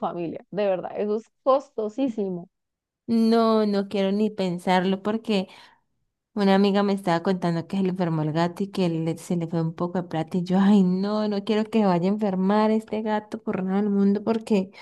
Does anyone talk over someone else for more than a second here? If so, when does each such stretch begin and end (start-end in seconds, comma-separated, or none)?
none